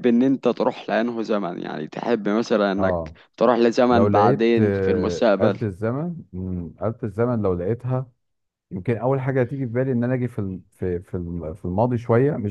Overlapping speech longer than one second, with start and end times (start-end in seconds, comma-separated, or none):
3.9-5.6